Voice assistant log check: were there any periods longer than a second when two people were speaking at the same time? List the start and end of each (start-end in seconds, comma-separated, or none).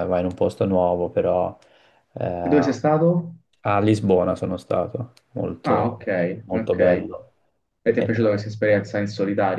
none